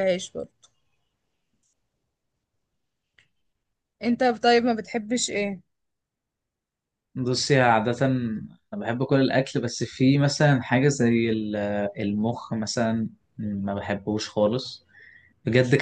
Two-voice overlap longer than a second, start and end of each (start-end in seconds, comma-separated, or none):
none